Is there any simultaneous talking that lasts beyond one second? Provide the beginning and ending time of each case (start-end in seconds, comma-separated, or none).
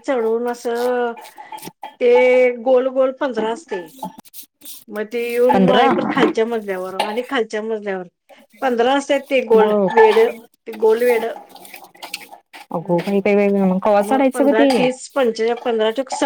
12.8-14.7